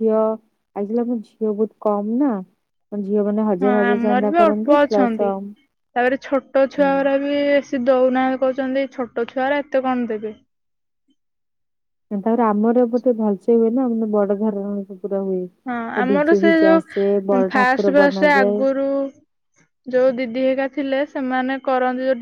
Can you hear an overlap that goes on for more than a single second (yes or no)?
yes